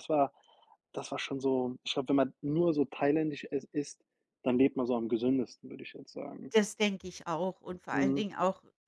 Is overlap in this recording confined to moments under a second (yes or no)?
yes